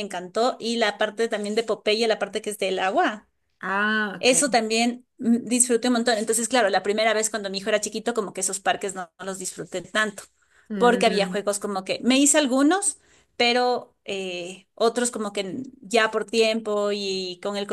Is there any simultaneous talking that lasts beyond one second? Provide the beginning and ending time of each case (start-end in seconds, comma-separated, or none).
none